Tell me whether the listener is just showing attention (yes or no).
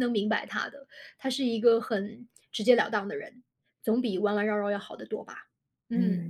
no